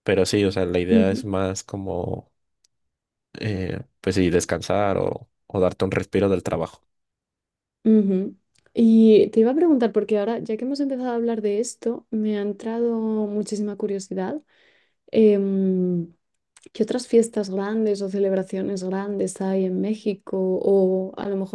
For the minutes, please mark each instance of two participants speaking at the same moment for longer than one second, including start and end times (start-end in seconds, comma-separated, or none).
none